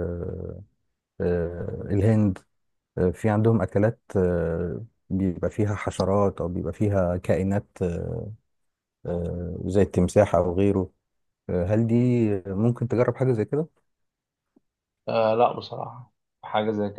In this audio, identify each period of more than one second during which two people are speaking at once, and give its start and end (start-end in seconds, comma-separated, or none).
none